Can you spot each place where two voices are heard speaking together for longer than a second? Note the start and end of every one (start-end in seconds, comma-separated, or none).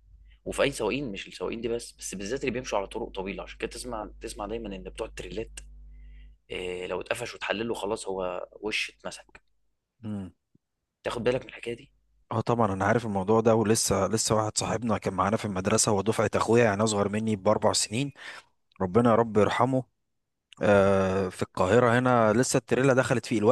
none